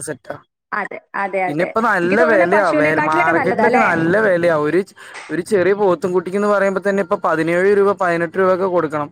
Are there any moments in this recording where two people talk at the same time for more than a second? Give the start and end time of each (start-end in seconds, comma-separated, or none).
1.5-3.9